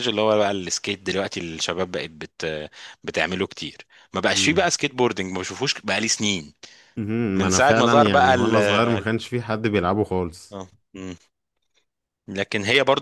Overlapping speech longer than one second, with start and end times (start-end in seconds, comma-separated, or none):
7.4-9.1